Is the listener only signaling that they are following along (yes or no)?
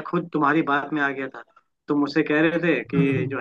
yes